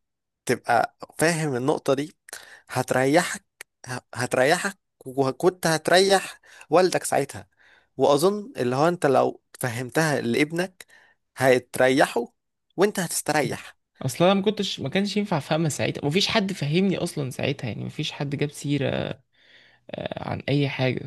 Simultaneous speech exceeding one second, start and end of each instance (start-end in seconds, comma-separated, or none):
none